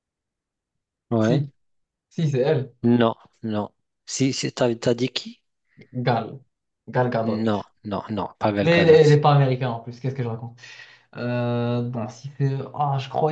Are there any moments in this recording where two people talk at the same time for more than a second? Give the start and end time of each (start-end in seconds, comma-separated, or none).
none